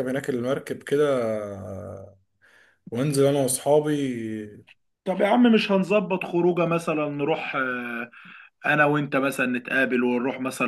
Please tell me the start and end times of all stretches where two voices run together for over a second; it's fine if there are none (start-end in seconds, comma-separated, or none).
none